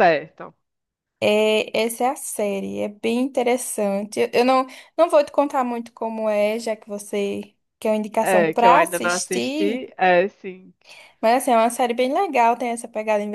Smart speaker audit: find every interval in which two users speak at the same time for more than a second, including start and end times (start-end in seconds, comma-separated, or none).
8.2-9.8